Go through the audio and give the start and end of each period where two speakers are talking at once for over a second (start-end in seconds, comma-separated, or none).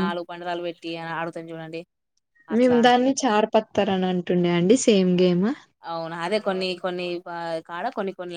none